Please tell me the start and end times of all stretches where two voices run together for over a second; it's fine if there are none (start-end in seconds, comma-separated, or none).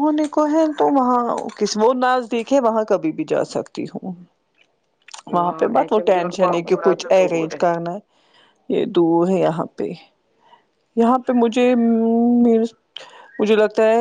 5.8-7.6